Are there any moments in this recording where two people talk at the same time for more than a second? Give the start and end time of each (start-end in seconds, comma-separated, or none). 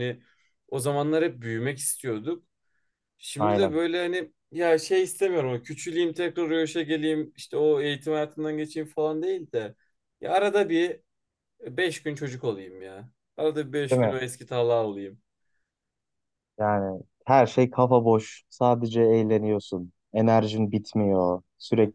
none